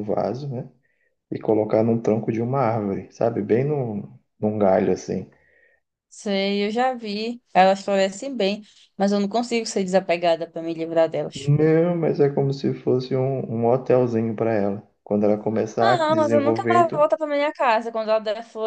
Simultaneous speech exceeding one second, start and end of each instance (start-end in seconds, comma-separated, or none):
15.8-17.1